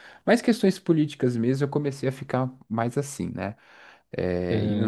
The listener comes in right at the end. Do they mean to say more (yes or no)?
yes